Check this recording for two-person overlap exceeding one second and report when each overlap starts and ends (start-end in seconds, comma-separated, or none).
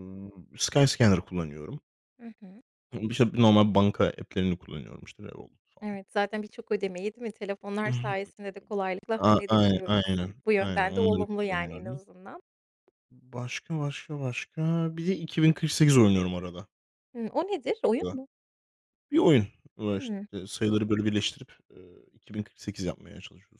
9.3-12.0